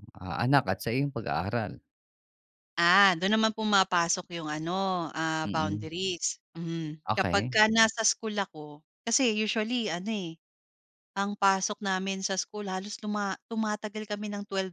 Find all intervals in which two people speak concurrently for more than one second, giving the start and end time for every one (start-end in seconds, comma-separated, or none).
none